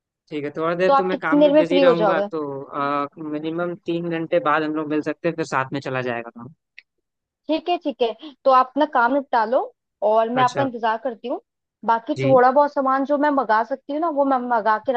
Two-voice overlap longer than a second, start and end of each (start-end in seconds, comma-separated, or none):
0.9-2.3